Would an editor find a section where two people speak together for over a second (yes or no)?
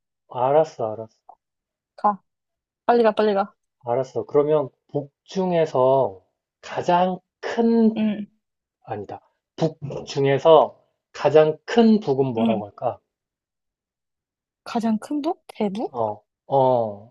no